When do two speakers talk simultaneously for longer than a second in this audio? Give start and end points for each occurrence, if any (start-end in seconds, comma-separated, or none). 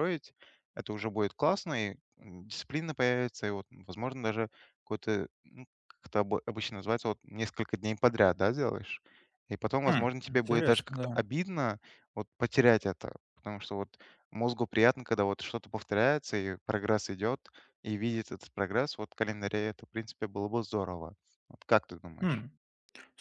9.8-11.2